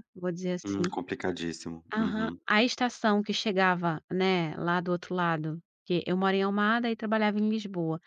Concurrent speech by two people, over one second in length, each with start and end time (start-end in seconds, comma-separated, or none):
none